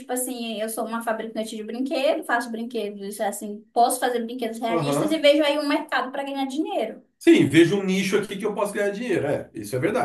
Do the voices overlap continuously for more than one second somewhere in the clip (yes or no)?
no